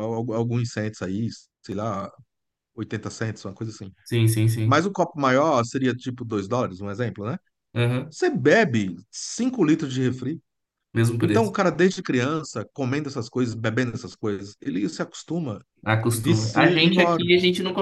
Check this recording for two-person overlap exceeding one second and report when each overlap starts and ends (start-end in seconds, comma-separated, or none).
16.1-17.3